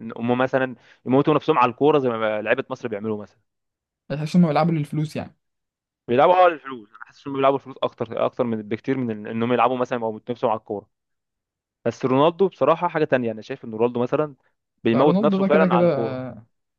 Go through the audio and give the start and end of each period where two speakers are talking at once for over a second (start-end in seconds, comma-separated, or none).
14.9-16.2